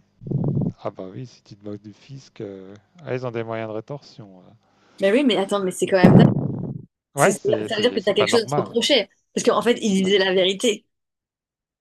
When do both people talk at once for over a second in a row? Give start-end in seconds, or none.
7.2-8.8